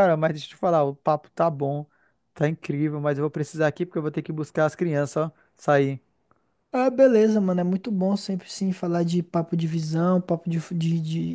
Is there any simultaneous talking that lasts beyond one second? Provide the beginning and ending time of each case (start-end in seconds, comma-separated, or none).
none